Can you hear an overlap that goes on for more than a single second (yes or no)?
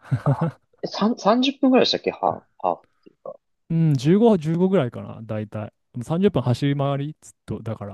no